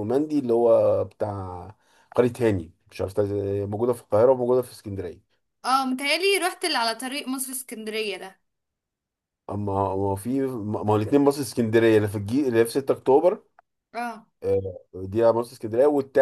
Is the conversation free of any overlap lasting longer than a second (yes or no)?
yes